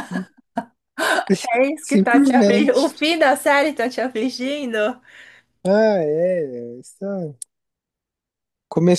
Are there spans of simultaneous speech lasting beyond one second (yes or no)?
yes